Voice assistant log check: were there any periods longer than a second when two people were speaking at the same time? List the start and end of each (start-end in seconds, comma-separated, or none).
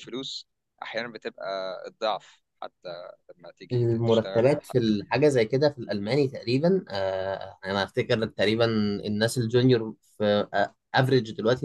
3.7-5.0